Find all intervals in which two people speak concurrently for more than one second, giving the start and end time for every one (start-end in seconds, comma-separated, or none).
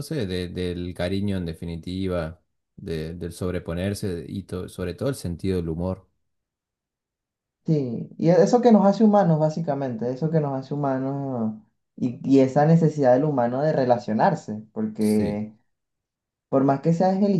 none